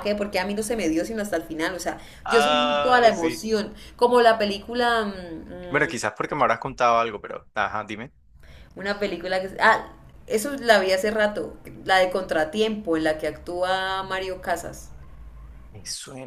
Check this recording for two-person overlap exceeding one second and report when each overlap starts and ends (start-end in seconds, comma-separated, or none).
2.2-3.5